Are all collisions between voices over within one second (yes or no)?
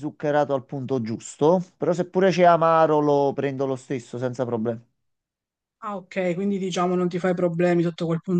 yes